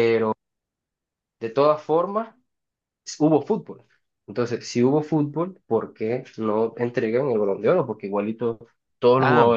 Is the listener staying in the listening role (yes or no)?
no